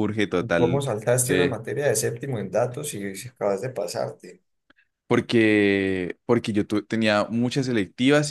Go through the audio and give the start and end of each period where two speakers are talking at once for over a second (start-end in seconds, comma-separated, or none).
none